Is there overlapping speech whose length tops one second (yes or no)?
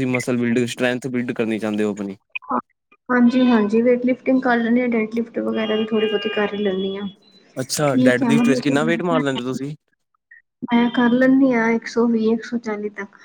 yes